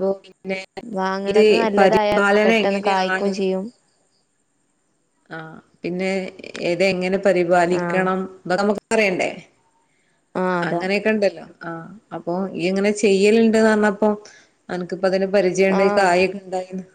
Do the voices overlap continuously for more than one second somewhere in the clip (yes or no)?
yes